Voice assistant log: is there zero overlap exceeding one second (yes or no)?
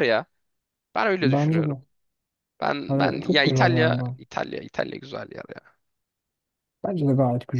no